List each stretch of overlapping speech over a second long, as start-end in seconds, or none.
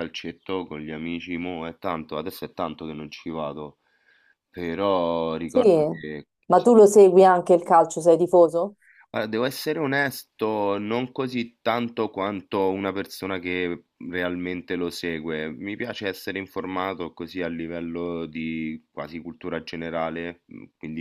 none